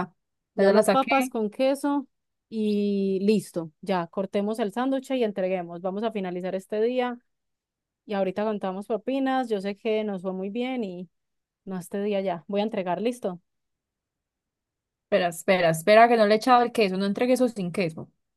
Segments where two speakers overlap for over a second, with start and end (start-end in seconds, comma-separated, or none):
none